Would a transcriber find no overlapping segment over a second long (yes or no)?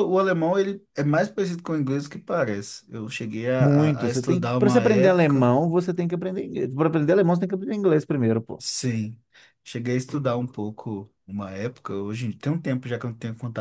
no